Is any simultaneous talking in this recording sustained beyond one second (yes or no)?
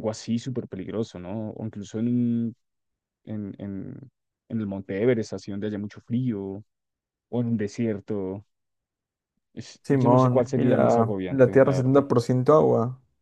yes